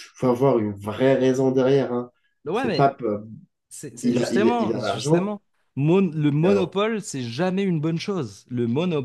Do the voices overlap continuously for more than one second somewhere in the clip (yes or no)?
yes